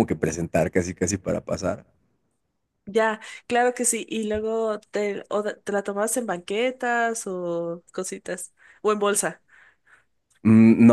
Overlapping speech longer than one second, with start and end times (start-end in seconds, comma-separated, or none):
none